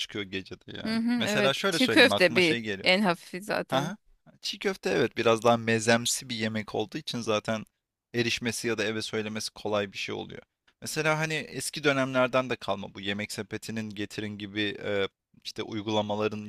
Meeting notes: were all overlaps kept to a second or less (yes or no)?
no